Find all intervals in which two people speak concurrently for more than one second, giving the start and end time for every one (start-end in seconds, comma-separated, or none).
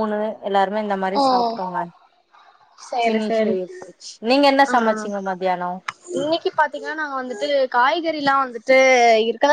none